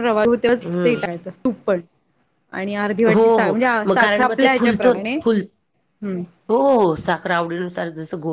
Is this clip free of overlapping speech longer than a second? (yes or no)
no